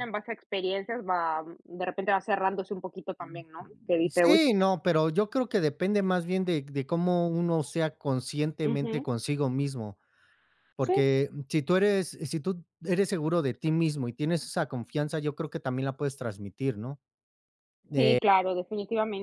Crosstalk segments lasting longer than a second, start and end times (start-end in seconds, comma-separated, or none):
none